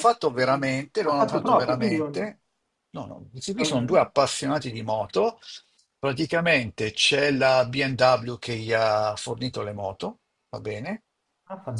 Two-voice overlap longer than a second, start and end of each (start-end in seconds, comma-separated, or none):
0.5-2.3